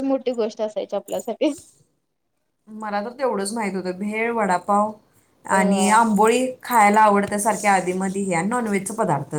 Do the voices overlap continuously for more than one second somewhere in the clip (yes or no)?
no